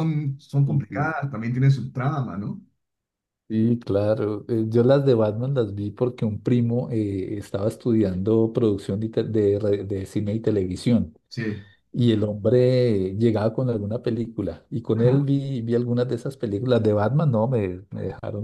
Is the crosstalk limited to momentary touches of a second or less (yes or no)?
yes